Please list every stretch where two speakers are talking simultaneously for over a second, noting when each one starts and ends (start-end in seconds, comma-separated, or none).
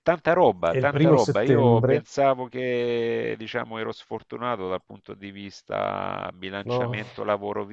0.7-2.0